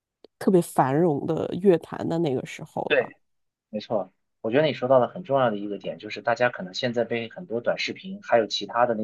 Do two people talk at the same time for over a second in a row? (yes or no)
no